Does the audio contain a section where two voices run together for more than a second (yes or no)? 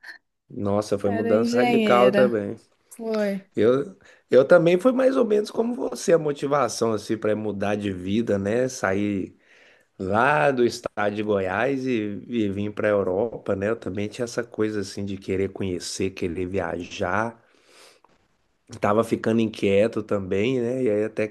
yes